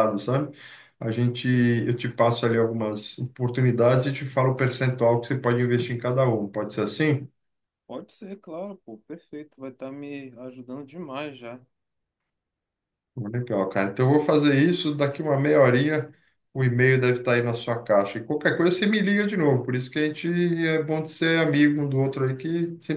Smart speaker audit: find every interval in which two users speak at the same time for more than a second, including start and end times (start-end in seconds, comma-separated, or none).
none